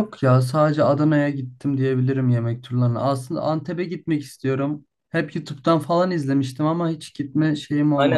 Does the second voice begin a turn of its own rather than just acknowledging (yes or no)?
yes